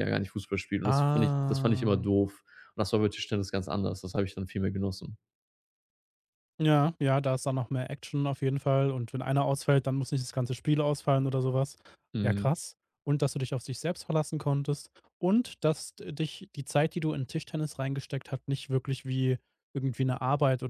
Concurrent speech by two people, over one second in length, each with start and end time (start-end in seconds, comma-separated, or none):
0.8-2.1